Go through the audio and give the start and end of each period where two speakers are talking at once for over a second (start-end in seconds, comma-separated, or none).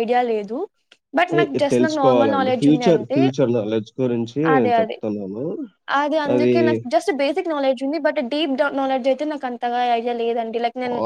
1.3-3.2